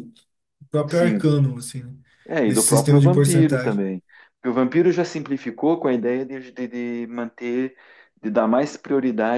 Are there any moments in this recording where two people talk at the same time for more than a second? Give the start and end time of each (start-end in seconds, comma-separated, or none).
2.5-3.8